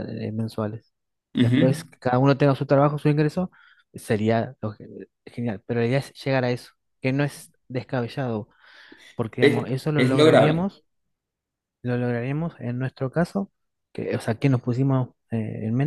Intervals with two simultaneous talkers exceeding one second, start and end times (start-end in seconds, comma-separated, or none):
9.4-10.7